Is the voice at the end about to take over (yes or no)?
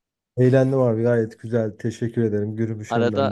yes